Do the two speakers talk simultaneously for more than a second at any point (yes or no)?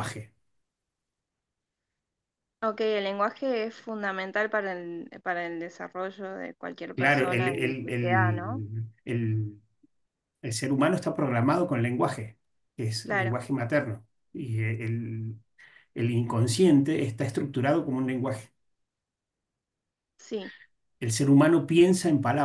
yes